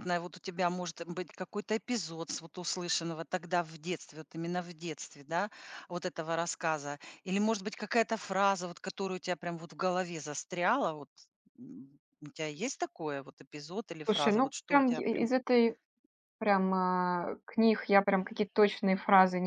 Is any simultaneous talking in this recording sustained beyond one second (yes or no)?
yes